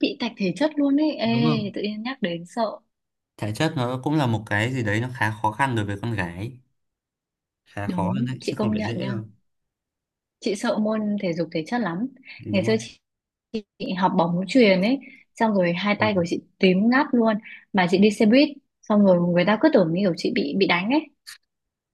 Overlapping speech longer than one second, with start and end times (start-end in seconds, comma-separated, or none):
7.8-9.2